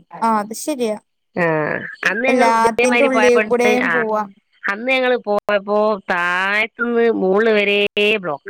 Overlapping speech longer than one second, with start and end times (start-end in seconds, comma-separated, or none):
2.3-3.9